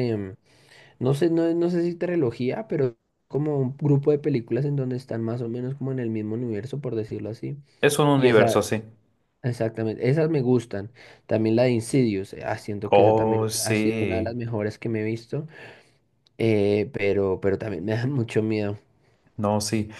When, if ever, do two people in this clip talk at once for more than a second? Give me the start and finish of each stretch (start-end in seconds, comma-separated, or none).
12.9-14.3